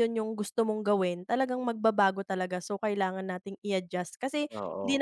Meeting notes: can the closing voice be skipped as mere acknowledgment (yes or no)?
yes